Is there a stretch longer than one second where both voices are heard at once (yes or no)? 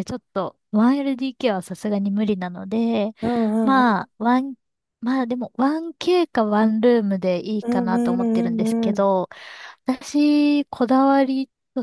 yes